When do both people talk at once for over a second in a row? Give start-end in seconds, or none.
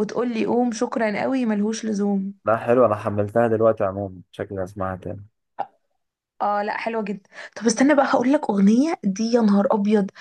none